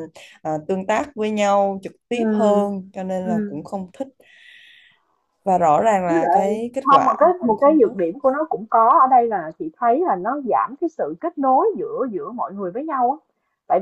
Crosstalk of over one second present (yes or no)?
yes